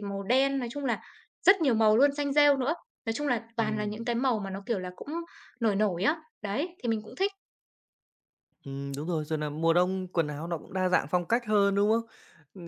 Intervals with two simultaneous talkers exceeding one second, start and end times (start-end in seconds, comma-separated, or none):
none